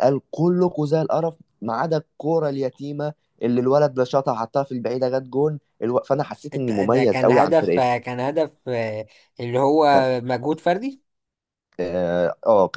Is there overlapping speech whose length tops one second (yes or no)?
yes